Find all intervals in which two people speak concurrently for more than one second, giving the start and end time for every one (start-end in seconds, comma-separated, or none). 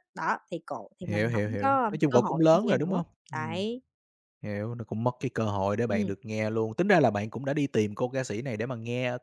1.0-3.6